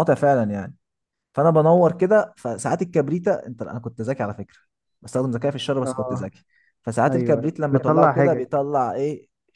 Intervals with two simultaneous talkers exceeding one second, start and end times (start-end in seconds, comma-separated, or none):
7.1-8.4